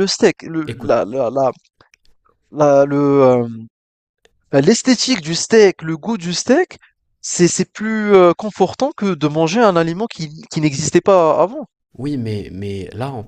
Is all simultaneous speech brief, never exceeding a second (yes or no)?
yes